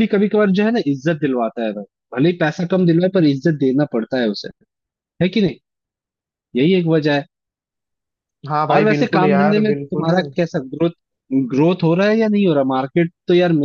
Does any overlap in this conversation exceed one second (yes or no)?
yes